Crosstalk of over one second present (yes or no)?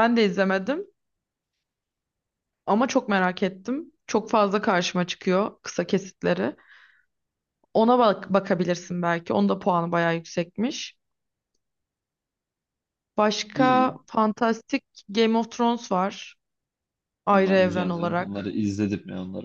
yes